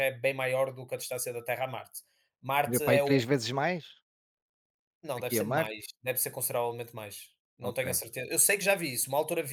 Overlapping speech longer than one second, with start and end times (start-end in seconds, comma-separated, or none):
none